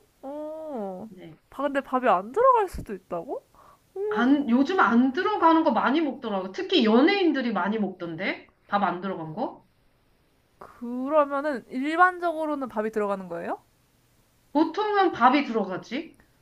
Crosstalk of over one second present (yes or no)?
no